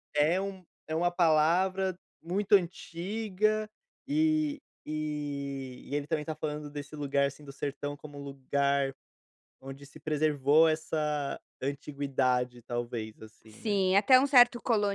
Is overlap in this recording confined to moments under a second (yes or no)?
yes